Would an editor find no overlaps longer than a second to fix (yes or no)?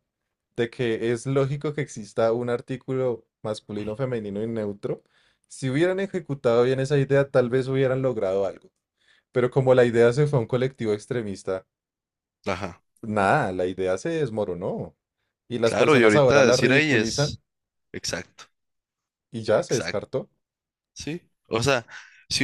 no